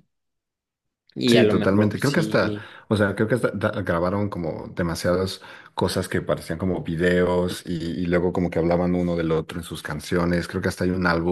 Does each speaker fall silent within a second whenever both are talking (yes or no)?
no